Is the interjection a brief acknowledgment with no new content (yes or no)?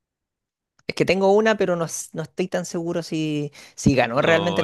no